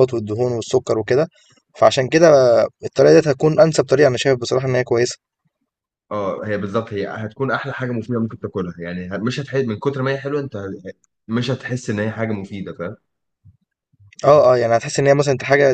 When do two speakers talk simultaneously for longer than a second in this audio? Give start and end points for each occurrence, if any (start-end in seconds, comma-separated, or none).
none